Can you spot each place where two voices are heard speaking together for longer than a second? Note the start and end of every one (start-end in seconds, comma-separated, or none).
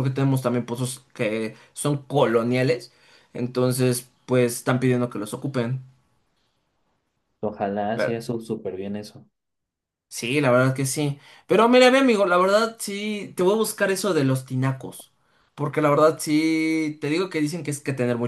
none